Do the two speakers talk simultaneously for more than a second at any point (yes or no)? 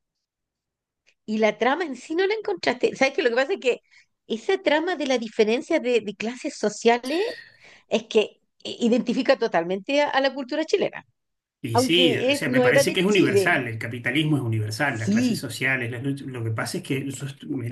yes